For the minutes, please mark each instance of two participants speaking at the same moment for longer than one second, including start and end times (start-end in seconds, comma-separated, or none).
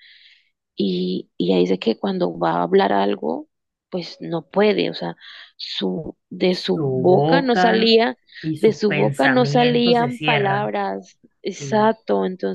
6.5-7.9, 8.6-10.7